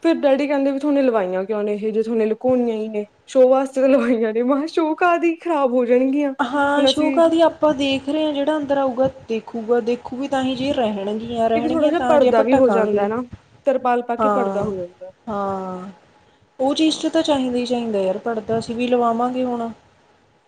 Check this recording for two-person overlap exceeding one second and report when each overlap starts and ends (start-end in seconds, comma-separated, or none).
11.5-13.1